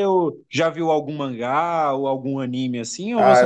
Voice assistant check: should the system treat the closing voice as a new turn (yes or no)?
yes